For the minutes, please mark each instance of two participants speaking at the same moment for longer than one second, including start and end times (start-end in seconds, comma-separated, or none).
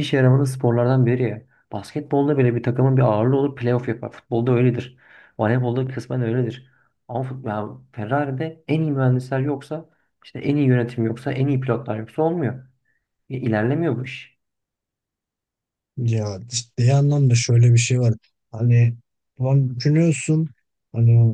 none